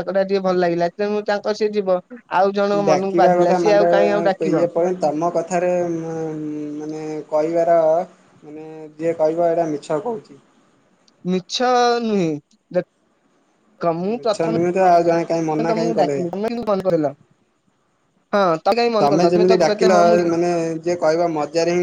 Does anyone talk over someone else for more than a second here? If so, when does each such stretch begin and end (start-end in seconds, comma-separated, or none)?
14.2-16.2